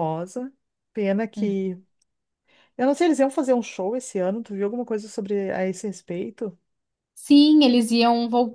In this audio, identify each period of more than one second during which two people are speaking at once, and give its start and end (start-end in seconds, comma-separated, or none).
none